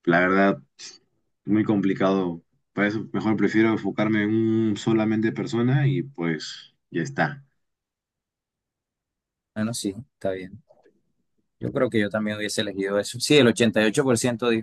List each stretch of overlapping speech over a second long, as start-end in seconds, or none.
none